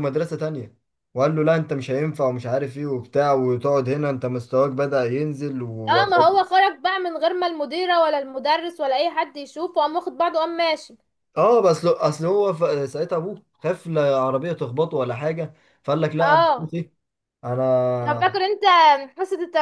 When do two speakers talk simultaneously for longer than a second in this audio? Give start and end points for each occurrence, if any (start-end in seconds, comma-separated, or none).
none